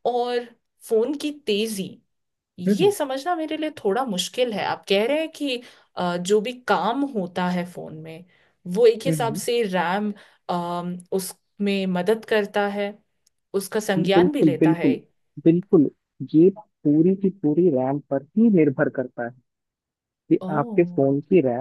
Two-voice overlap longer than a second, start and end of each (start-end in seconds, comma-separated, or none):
13.8-14.9